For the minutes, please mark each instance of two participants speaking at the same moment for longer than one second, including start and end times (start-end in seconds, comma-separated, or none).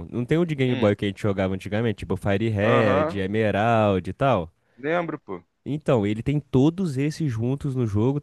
none